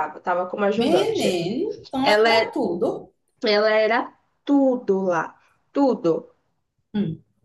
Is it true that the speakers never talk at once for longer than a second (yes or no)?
yes